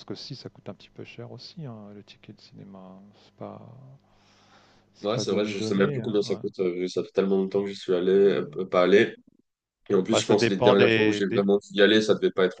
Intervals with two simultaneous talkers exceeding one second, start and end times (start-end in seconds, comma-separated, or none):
5.0-6.4, 10.1-11.4